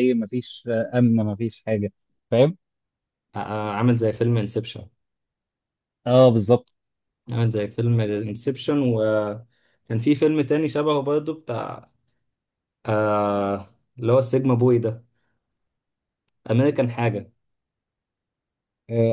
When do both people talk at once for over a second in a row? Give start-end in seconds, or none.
none